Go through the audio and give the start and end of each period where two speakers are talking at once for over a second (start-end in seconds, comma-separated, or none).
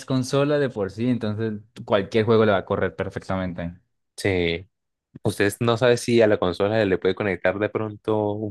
none